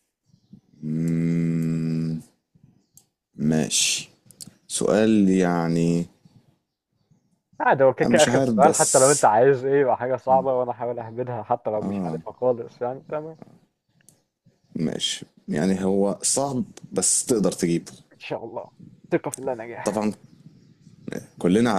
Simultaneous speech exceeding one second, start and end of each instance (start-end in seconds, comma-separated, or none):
8.0-9.2